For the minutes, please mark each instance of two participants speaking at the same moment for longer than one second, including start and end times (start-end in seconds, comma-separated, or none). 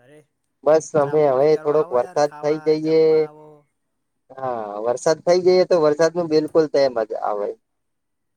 1.0-3.0